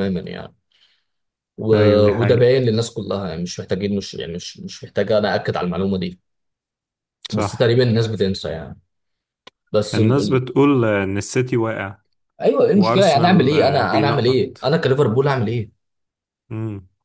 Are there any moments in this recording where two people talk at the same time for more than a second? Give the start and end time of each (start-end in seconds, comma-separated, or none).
12.7-14.7